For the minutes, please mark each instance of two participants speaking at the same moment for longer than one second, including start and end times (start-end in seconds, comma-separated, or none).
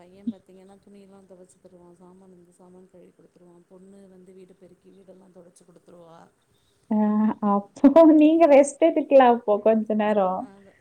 none